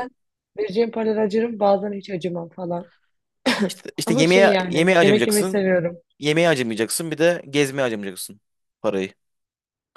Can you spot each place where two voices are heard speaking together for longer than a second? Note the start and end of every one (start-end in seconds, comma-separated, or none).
4.1-5.7